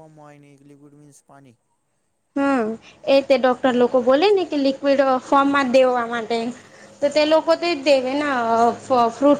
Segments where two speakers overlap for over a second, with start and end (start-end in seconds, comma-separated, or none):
none